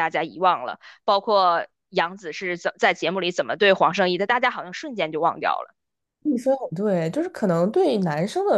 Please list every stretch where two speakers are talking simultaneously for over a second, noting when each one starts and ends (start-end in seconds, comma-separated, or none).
none